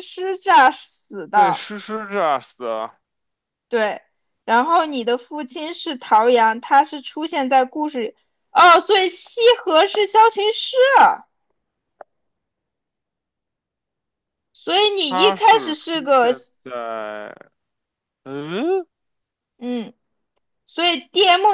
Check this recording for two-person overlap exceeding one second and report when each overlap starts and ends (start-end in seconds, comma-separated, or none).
15.1-16.3